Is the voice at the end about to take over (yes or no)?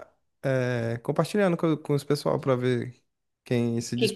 yes